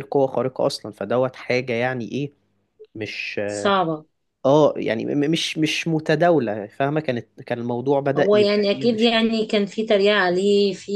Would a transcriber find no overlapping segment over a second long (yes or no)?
no